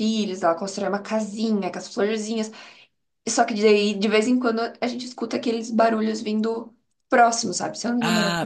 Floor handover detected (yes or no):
yes